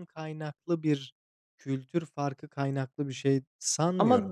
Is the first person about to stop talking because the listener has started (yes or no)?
yes